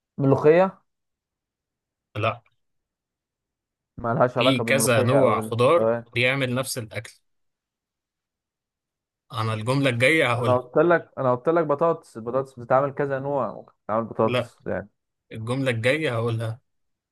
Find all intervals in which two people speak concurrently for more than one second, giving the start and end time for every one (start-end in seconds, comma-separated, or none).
4.4-6.0